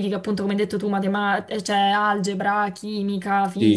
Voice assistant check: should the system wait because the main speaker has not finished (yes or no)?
no